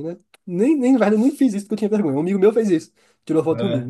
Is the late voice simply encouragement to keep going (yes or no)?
yes